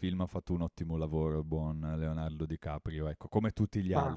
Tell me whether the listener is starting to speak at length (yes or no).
no